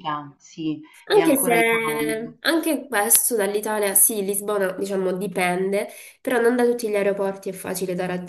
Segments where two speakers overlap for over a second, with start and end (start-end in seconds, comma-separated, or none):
1.1-2.3